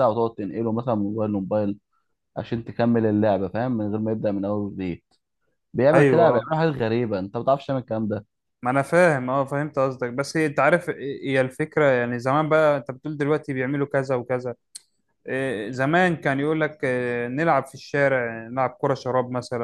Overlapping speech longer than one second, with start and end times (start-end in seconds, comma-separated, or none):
none